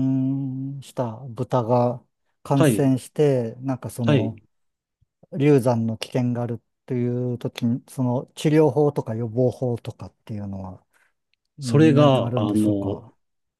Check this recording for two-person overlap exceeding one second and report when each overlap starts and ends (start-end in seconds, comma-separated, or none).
11.6-13.0